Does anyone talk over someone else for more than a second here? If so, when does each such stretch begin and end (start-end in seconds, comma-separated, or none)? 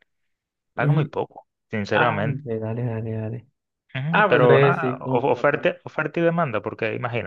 4.1-5.7